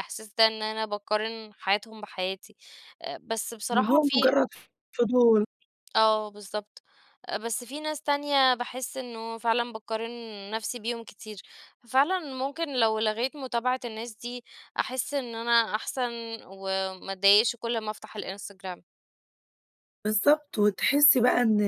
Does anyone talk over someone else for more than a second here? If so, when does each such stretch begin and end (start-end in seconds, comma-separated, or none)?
none